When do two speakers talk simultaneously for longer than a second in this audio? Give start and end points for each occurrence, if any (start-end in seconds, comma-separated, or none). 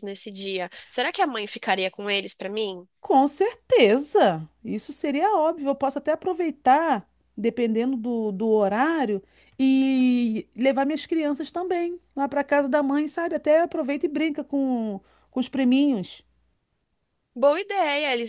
none